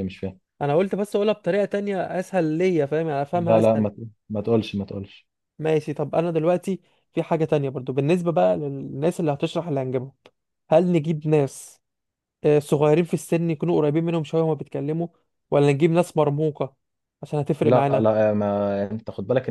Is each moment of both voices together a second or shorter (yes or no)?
yes